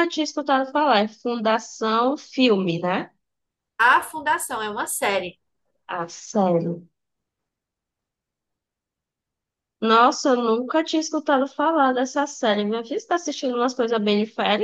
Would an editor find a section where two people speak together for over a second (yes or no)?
no